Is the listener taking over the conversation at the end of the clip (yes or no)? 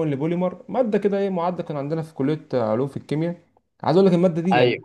no